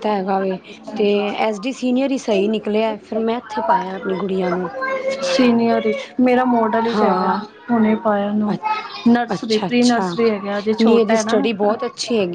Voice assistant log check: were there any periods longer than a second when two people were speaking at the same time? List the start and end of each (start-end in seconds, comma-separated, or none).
none